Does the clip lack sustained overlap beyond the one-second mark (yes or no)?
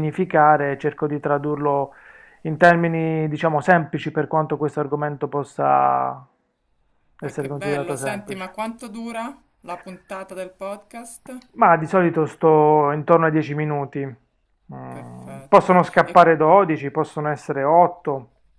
no